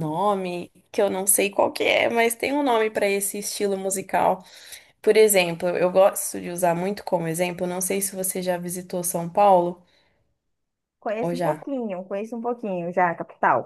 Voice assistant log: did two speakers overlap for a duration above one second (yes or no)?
no